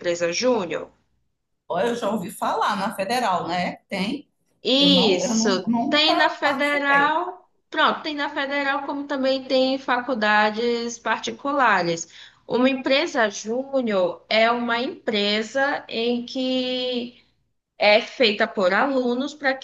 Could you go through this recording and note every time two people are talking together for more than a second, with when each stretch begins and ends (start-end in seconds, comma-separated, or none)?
4.8-7.2